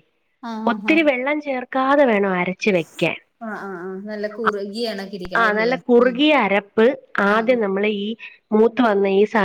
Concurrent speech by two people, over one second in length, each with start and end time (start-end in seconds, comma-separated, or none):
none